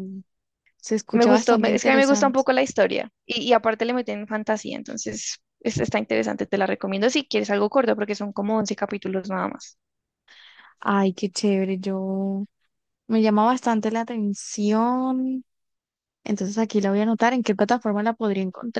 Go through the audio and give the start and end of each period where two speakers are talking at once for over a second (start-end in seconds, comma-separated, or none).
1.1-2.4